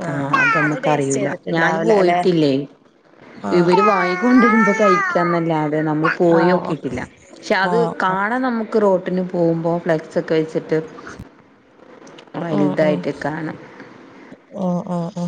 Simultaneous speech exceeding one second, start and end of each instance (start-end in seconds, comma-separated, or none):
none